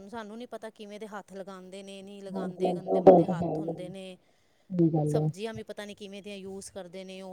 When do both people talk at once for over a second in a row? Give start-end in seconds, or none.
2.4-3.9